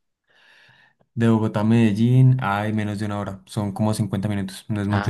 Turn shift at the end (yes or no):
yes